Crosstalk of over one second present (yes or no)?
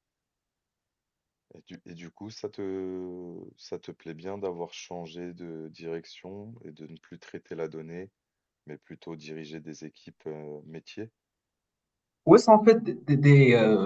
no